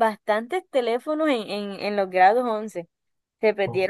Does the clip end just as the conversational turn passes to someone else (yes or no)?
no